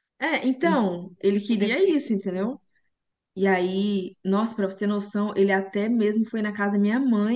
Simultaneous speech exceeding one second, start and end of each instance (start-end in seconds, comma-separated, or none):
0.6-2.6